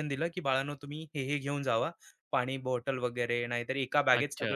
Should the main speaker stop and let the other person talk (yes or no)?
no